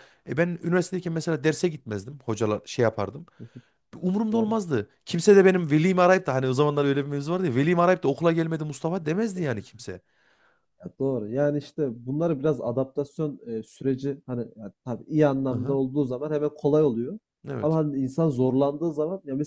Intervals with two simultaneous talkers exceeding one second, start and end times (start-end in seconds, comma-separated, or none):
none